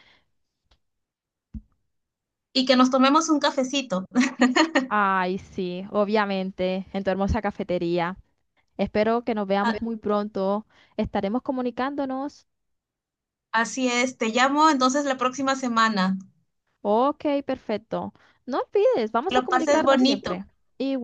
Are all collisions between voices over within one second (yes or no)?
no